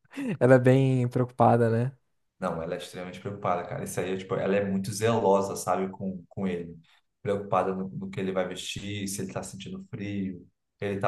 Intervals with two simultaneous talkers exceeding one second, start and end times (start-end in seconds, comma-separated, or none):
none